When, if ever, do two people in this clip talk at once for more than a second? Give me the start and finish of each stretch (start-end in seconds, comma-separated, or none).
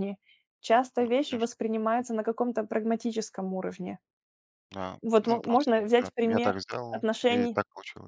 5.0-7.6